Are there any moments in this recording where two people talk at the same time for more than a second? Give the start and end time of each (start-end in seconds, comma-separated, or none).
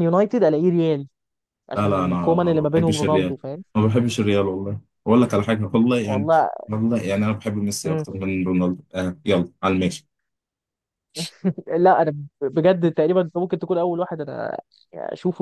1.8-3.4